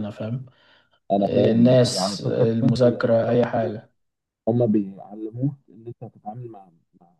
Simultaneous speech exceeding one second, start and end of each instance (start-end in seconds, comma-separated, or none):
1.2-3.8